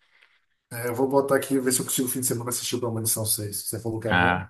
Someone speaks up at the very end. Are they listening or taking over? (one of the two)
taking over